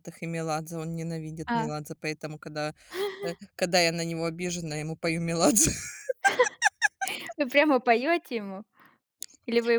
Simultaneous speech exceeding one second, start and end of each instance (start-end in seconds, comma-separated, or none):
none